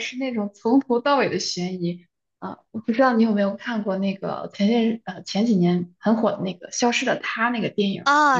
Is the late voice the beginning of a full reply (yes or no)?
yes